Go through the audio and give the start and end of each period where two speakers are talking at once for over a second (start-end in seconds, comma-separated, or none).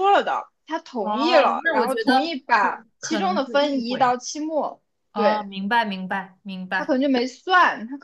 1.0-4.1